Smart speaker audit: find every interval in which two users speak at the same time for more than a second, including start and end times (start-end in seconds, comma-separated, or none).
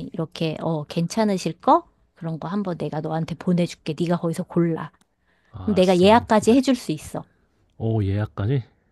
5.6-6.8